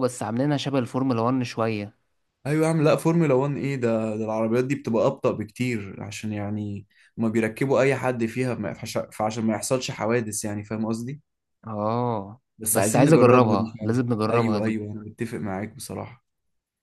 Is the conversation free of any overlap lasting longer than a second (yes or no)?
no